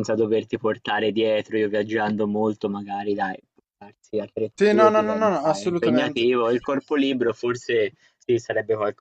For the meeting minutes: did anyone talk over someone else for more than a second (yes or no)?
yes